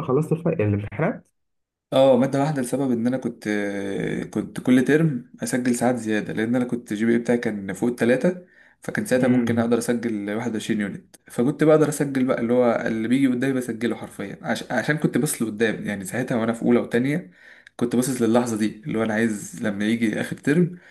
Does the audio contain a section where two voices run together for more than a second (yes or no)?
no